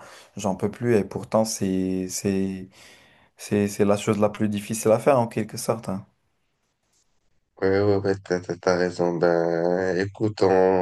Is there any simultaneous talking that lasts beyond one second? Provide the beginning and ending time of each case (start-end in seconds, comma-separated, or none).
none